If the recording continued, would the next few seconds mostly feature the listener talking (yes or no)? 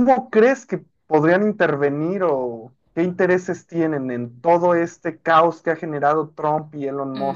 yes